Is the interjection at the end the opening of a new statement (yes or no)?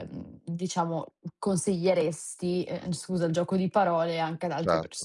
yes